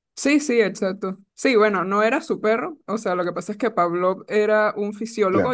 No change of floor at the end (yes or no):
yes